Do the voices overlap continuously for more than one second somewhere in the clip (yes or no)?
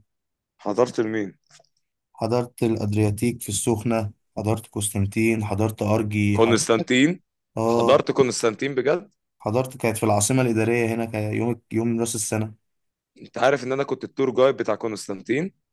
no